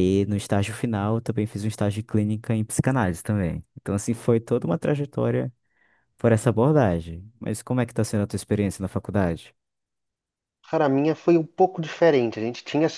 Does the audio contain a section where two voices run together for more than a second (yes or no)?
no